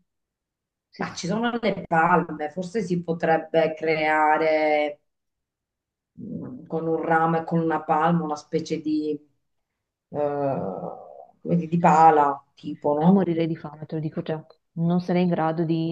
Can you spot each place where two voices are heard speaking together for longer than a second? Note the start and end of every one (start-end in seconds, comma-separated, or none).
none